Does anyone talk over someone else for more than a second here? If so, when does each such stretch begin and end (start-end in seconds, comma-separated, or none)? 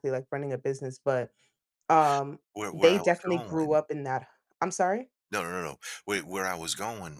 2.5-3.8